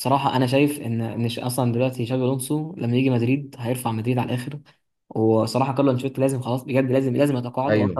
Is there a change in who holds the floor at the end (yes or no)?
no